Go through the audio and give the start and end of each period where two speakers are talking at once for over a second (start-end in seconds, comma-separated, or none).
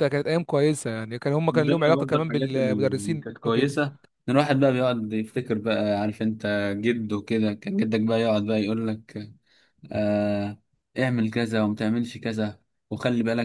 1.5-3.8